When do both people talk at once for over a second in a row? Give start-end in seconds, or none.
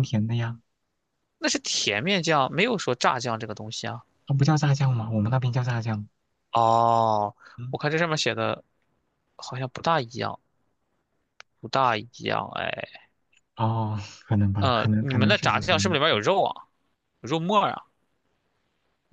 14.6-16.0